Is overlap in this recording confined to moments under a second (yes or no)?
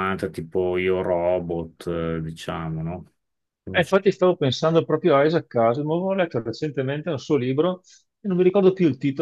yes